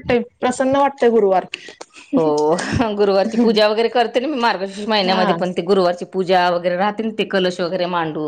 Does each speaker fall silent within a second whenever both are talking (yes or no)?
yes